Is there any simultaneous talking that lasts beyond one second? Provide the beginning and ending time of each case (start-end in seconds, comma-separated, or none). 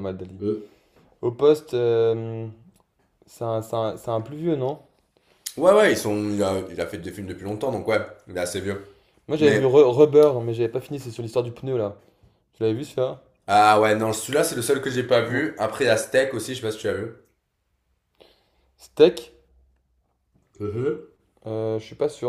none